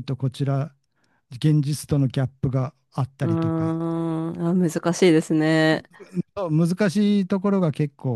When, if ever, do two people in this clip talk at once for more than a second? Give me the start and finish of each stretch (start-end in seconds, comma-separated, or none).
none